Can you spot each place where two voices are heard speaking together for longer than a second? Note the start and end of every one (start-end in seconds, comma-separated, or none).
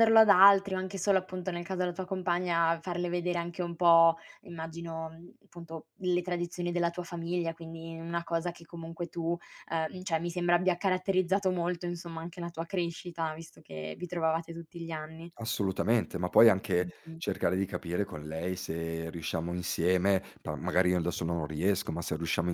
none